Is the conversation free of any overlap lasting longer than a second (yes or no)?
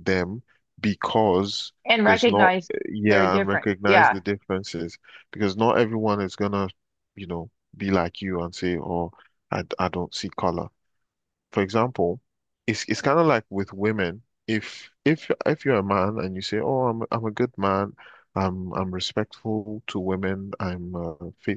no